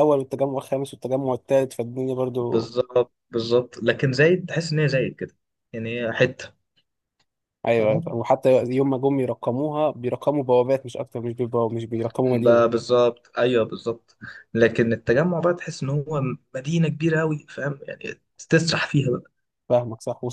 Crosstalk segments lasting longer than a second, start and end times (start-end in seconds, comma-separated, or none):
none